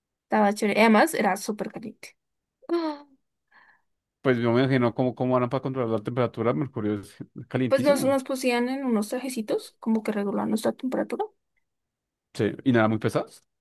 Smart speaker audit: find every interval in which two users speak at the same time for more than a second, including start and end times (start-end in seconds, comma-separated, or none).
none